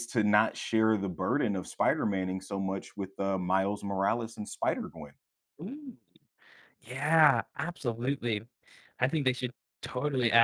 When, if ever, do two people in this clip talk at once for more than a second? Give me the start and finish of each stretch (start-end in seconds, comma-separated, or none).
none